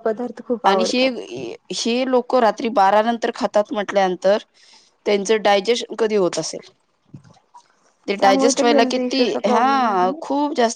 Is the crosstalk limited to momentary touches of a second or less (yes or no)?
no